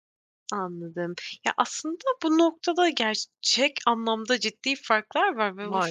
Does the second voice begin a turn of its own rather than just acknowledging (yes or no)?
no